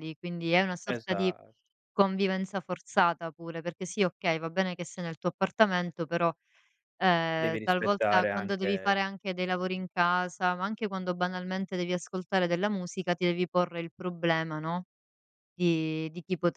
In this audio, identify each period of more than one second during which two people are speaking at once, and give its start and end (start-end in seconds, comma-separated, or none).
7.4-9.1